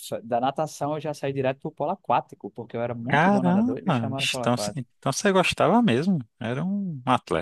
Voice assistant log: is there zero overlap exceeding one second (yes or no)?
no